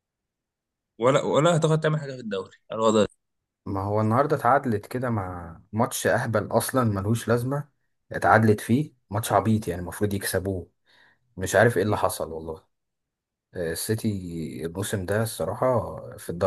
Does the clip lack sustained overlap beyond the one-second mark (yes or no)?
yes